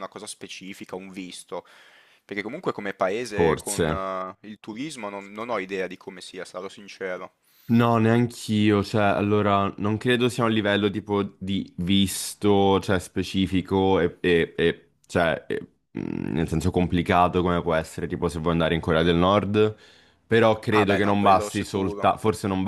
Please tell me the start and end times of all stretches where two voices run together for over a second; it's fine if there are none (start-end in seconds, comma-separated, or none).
20.8-22.1